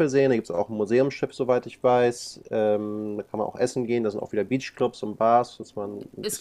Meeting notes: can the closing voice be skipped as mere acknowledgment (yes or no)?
no